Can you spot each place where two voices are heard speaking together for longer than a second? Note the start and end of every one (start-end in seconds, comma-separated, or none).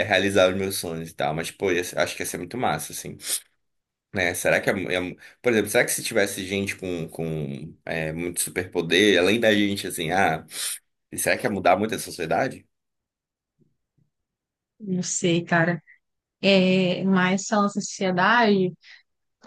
none